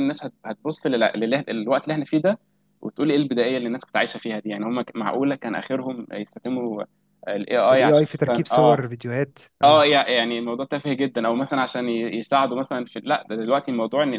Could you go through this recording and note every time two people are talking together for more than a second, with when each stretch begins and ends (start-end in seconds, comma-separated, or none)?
7.7-8.9